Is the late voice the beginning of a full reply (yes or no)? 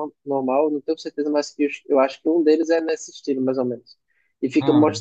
no